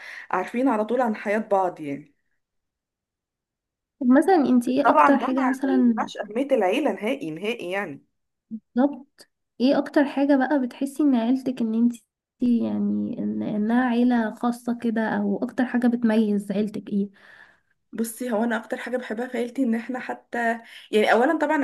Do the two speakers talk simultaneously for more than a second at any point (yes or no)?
yes